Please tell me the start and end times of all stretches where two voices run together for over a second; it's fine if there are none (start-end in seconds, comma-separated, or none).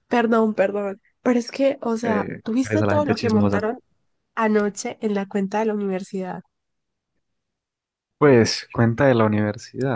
2.0-3.6